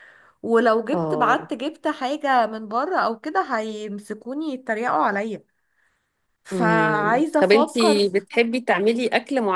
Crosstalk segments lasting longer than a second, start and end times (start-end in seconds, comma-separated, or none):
6.5-8.2